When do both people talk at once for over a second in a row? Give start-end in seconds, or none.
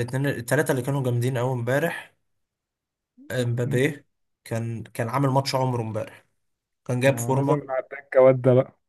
none